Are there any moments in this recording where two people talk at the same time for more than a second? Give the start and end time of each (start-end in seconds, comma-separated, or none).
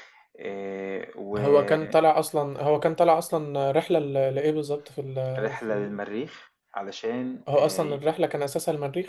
none